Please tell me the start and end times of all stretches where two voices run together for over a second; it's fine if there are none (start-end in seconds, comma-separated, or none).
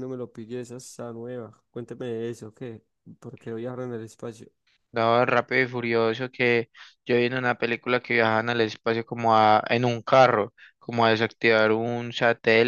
none